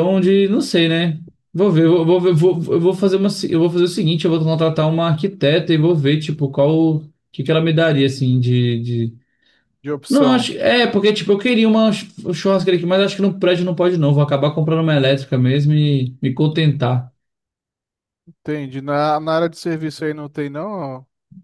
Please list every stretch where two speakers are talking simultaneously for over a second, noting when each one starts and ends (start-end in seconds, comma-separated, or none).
none